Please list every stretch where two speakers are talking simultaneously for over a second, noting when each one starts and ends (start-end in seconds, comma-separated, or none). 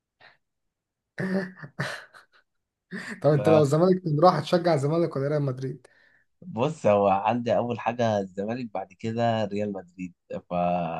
none